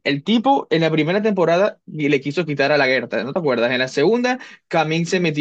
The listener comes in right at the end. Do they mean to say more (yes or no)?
no